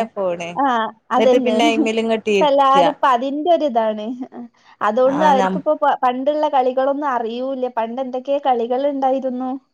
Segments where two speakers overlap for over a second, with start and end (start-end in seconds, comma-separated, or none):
1.1-2.9